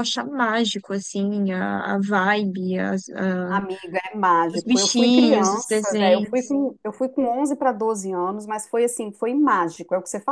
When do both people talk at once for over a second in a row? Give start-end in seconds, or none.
4.5-6.5